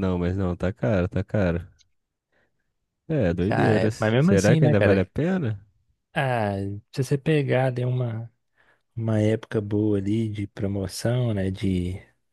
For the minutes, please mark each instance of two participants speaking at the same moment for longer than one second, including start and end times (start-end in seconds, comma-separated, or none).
3.5-5.1